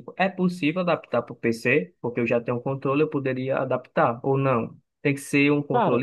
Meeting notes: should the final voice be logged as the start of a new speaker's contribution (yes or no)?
no